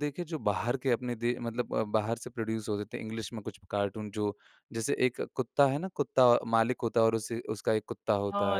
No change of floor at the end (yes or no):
no